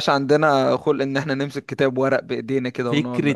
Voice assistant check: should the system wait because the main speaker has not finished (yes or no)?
no